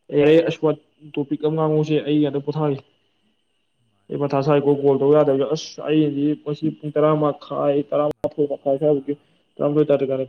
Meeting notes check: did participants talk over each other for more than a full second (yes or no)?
yes